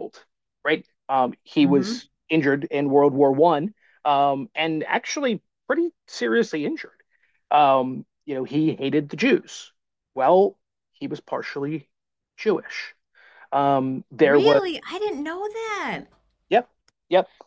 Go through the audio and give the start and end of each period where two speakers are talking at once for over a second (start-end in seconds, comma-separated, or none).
none